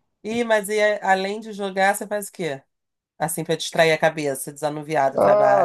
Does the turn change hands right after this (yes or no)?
yes